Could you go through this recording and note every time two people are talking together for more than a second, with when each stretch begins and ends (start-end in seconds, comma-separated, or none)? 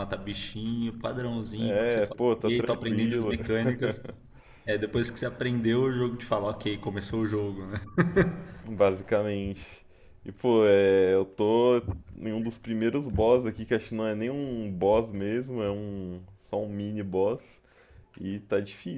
1.6-3.4